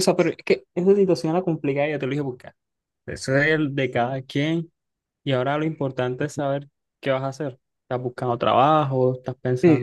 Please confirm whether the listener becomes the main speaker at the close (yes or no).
yes